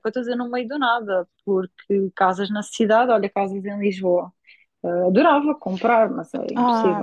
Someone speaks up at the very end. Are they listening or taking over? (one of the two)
taking over